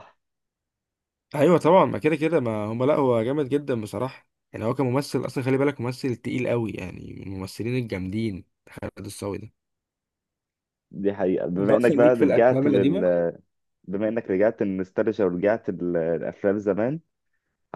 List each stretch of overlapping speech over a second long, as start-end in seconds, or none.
11.6-13.0